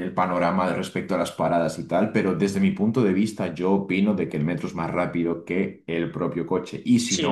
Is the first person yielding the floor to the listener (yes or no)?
yes